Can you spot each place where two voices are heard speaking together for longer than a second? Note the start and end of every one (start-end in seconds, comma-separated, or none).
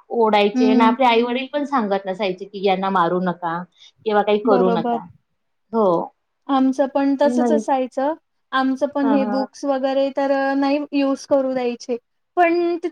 none